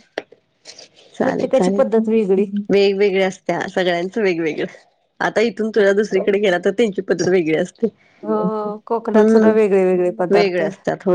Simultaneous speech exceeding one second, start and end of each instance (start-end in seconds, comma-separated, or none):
none